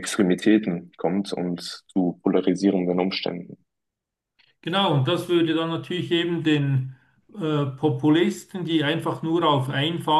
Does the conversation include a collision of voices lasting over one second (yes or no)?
no